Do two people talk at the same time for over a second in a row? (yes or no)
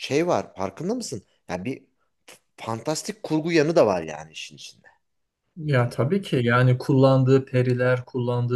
no